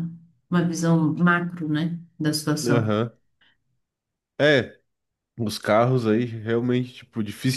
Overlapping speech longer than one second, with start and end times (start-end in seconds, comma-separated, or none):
none